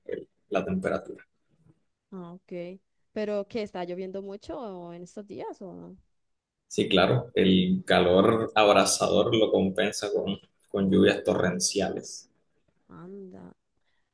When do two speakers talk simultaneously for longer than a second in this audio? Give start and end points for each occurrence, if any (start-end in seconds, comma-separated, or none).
none